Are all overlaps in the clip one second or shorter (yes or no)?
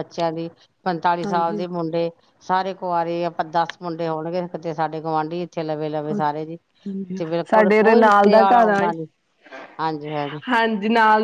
no